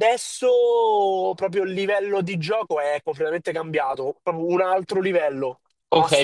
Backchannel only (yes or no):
no